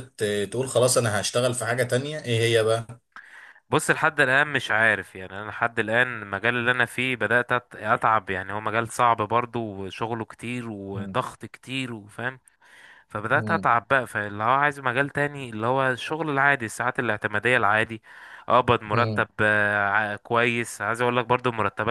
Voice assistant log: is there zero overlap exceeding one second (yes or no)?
yes